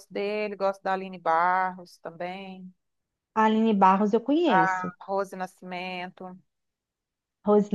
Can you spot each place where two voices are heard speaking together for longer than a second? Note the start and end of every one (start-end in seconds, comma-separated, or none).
none